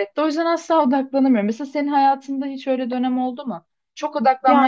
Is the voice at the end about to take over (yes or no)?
no